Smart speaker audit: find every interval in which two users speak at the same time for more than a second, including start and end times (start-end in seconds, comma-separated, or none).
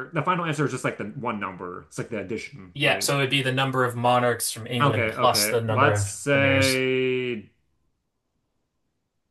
4.8-6.8